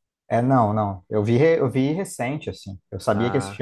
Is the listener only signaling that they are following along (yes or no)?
yes